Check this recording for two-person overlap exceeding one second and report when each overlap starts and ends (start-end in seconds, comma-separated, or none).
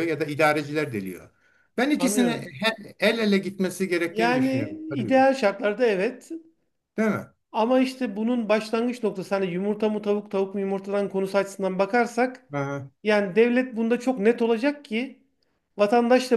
4.0-5.2